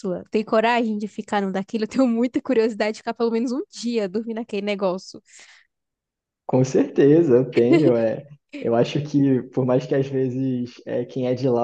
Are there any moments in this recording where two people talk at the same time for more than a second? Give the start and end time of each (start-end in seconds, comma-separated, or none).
none